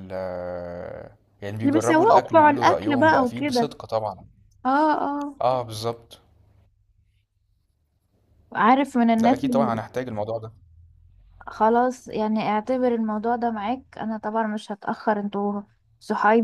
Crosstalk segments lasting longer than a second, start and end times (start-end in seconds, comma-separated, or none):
1.6-3.7